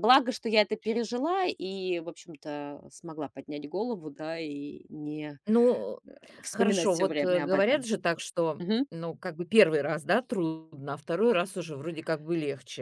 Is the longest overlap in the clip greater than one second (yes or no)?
yes